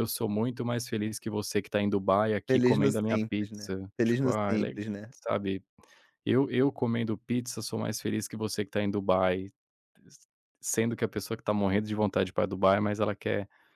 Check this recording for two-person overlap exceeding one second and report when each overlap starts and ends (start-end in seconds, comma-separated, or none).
2.5-5.1